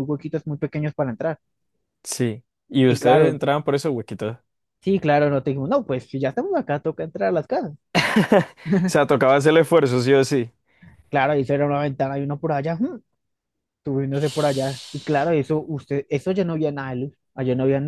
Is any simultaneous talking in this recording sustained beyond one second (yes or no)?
no